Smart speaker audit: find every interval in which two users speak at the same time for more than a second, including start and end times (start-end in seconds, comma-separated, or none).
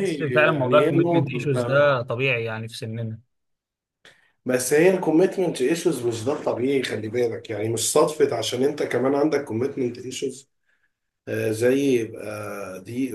0.5-1.8